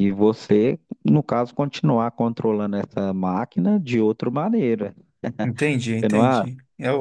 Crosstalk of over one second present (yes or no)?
no